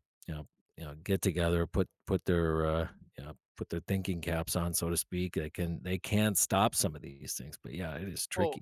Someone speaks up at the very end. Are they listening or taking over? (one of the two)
taking over